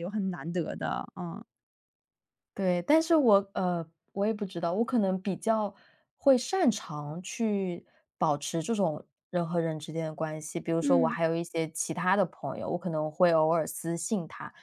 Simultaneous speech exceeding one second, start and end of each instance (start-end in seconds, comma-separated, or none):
none